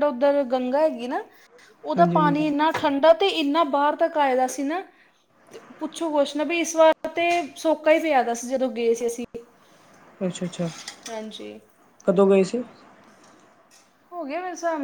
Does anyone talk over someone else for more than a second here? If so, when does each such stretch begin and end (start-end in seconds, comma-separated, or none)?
none